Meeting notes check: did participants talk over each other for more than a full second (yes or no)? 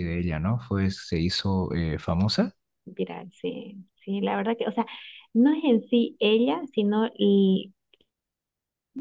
no